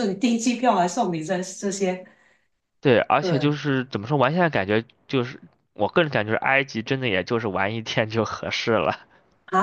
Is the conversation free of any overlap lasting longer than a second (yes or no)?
yes